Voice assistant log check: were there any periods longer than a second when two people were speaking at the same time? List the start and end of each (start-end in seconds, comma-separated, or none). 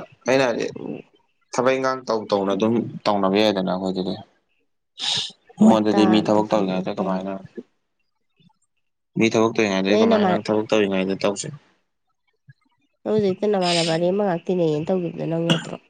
5.7-7.3